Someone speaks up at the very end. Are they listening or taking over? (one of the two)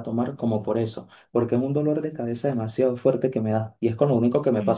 taking over